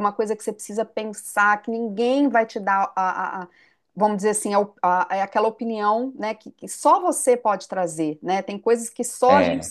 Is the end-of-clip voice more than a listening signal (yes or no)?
no